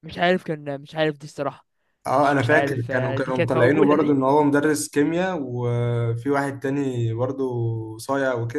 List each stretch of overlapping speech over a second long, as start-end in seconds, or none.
2.2-4.2